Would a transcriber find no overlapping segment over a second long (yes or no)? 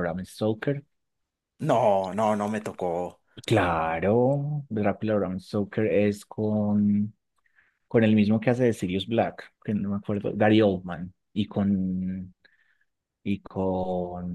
yes